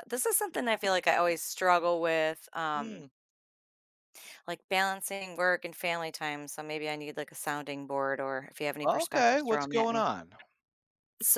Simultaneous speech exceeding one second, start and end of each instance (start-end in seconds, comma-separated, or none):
8.8-10.1